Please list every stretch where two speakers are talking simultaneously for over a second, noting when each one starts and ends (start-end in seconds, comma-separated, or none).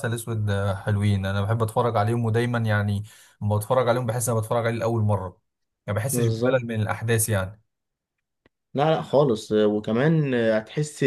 none